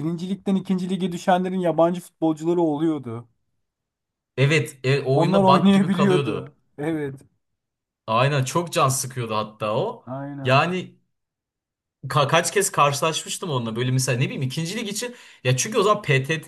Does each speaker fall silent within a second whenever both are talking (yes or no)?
no